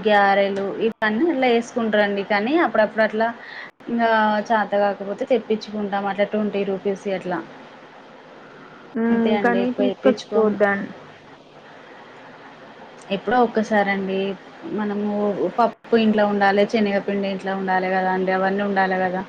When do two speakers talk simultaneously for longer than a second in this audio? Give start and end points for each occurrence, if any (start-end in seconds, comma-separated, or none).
9.1-10.6